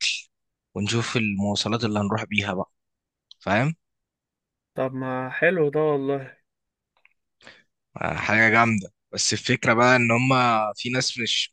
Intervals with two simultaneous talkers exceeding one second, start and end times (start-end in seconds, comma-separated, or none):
none